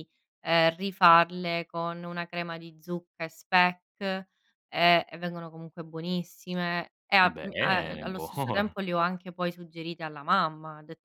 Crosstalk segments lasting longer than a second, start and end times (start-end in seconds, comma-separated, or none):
7.2-8.8